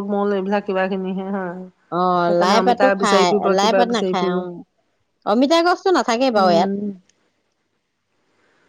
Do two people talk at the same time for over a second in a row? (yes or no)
yes